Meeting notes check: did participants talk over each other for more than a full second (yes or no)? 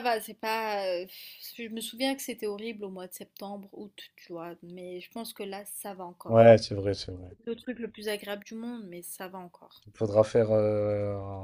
no